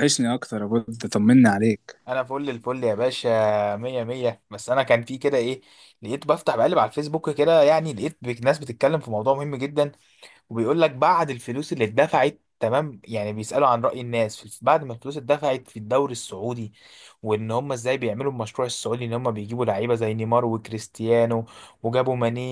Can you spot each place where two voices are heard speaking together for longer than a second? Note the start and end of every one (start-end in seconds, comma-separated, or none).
none